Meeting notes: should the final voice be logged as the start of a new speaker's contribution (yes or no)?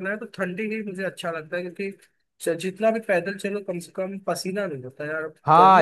yes